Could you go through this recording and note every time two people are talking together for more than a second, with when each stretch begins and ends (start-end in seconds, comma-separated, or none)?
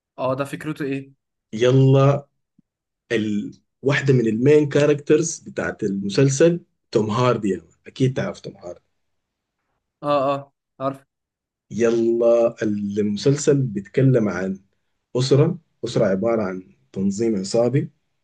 none